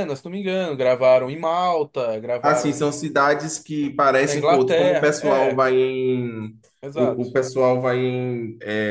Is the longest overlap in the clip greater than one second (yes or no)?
yes